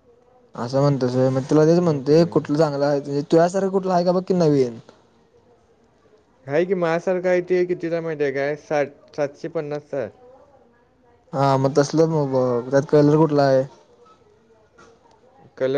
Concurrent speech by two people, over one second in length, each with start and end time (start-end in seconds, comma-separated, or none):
none